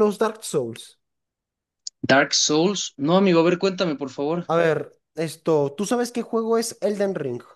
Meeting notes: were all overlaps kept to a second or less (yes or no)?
yes